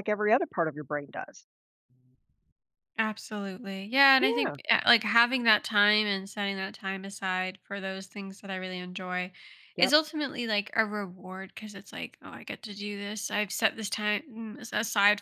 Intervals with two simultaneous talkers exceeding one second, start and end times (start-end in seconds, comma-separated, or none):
none